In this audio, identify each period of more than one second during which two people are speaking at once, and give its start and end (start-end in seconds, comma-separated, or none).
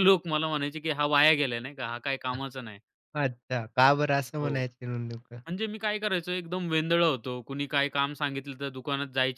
none